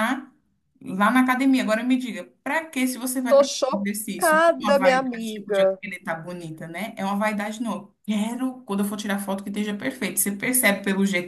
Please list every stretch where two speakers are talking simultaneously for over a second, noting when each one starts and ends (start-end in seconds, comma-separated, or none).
3.3-5.8